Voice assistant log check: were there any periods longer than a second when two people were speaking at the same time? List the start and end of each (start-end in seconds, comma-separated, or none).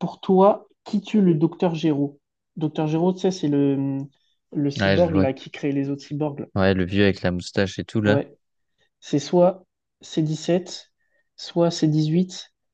none